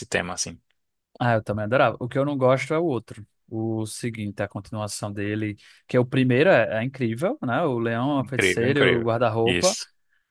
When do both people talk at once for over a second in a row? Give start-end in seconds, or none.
8.2-9.8